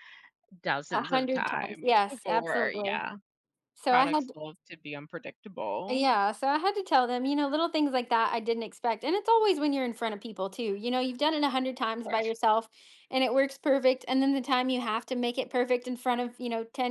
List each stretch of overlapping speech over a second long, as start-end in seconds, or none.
0.9-3.0